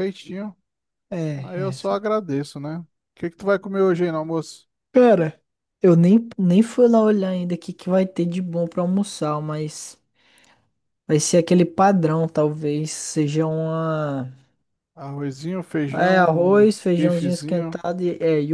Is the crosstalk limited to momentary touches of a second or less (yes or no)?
no